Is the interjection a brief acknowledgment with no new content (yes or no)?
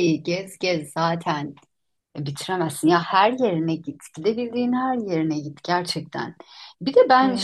yes